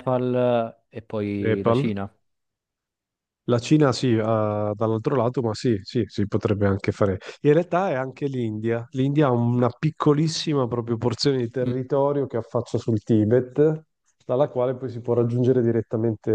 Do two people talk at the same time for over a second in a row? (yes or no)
no